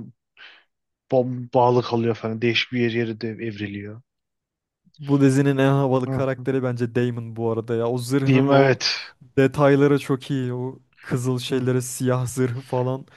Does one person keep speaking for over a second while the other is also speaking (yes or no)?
no